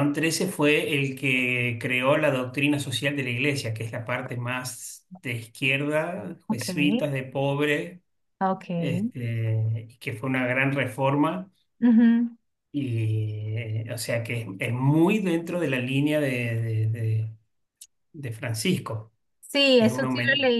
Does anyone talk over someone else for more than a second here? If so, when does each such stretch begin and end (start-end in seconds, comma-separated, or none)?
none